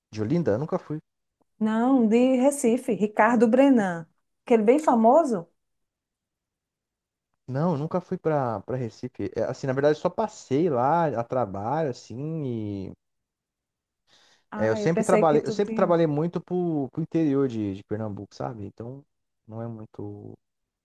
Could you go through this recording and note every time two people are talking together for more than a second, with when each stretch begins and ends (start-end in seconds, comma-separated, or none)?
14.6-15.9